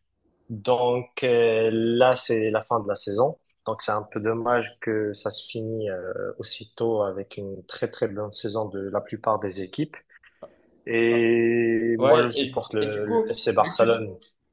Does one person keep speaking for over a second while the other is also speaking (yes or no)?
yes